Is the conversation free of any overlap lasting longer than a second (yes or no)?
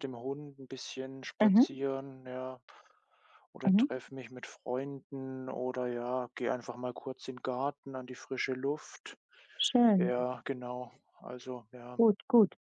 yes